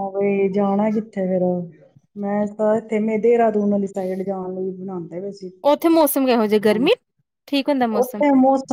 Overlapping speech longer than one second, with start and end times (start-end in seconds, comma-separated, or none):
none